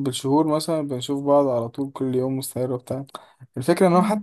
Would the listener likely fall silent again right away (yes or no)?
yes